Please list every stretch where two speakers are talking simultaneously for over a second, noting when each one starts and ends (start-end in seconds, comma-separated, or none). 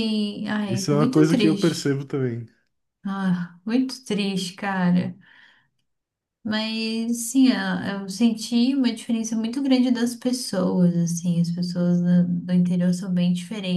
0.7-1.9